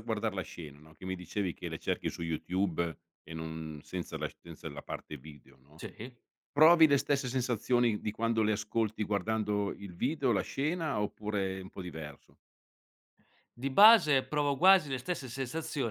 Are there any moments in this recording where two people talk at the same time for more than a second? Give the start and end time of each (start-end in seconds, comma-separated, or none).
none